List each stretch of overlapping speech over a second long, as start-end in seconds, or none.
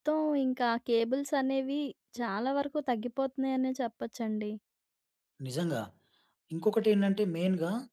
none